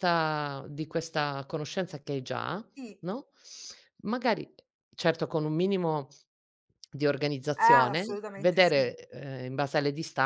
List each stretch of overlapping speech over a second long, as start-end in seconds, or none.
7.6-8.9